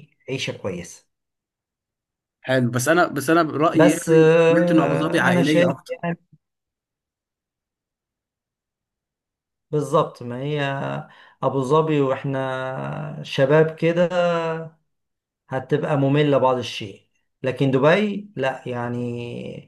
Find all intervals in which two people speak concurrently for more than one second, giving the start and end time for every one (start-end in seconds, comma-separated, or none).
3.7-6.0